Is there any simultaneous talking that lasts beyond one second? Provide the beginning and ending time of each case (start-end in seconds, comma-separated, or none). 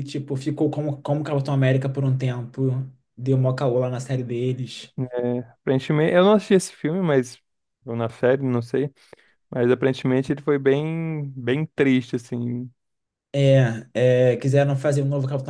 none